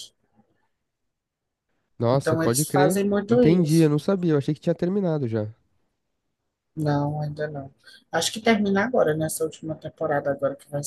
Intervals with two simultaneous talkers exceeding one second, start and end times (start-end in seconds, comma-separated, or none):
2.1-3.9